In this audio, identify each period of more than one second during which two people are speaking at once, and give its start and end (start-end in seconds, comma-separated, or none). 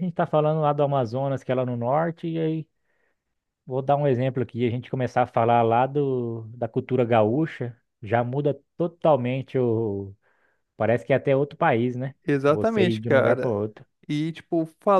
12.3-13.6